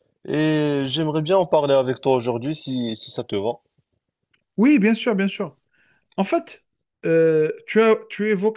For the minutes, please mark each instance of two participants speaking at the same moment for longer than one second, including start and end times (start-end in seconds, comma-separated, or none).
none